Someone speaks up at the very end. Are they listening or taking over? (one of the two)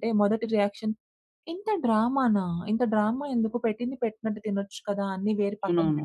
listening